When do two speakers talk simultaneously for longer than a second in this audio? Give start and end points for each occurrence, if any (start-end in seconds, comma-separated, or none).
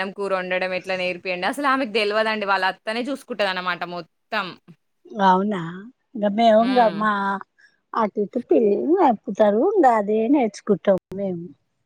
none